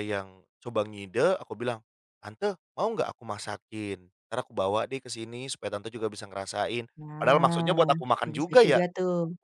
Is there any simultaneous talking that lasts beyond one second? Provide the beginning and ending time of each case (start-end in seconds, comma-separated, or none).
7.0-8.8